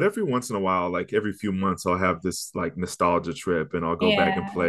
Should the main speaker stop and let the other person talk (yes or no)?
no